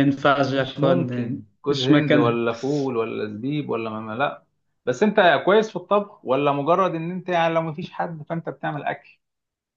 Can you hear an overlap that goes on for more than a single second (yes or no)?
yes